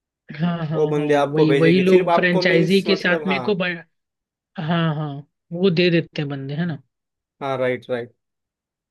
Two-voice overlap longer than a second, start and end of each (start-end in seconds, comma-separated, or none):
0.7-3.4